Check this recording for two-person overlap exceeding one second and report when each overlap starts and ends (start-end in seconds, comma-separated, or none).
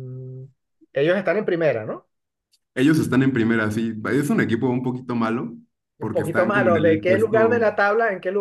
6.0-7.7